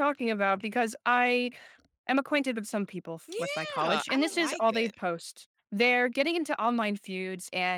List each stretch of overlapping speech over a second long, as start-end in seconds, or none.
3.3-5.0